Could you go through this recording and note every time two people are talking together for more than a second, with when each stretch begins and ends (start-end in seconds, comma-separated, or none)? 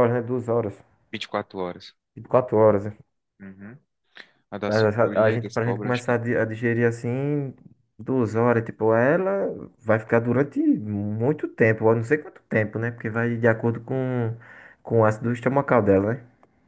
4.7-6.1